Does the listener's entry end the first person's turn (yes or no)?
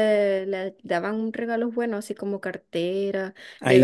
no